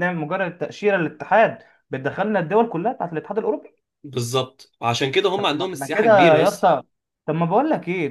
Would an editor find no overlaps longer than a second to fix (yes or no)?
no